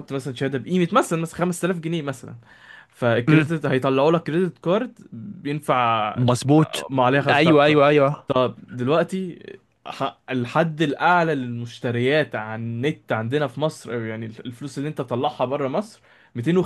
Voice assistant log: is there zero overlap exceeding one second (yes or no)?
yes